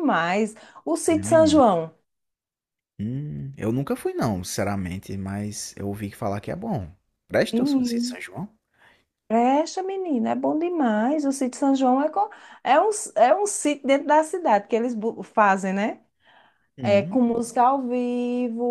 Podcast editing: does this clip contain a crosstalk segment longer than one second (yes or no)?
no